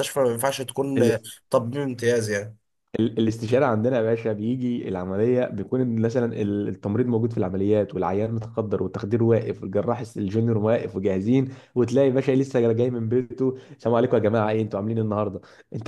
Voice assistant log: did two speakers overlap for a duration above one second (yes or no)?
no